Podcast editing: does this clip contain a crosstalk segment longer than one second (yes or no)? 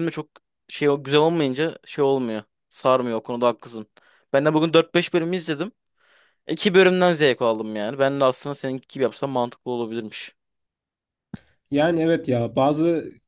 no